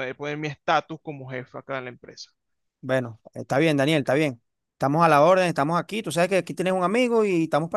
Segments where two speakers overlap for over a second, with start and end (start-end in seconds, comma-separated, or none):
none